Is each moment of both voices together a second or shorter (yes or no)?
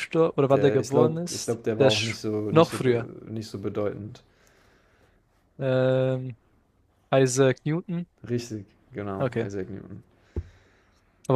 no